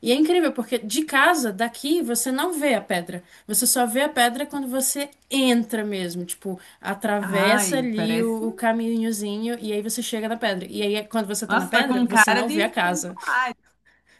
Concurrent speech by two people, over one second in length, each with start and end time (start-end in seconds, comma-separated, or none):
7.2-8.5, 11.5-13.2